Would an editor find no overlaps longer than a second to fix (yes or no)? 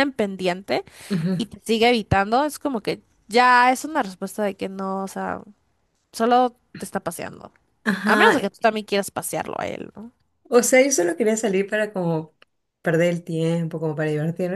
yes